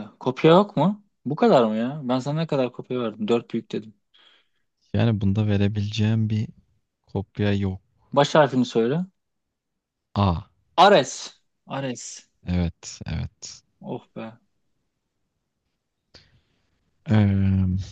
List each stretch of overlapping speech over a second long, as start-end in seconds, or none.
none